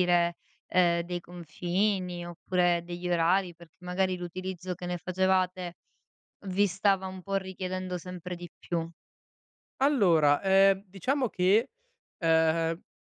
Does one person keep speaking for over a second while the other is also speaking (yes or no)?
no